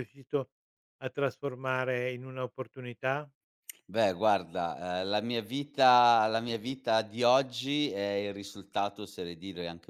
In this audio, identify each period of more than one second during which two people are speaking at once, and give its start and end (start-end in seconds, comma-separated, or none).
none